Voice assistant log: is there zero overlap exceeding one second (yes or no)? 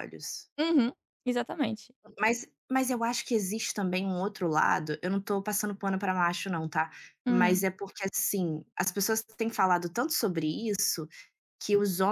yes